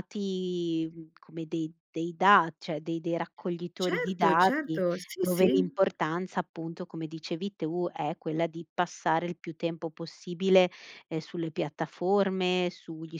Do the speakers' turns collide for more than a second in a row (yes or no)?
yes